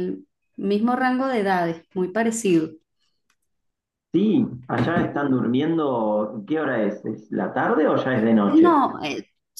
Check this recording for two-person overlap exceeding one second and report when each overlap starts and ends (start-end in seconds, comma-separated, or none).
none